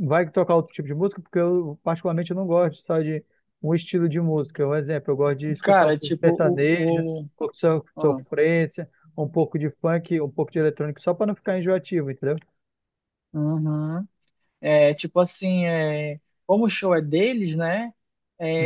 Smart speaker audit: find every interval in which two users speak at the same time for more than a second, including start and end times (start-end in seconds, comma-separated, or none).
5.6-7.3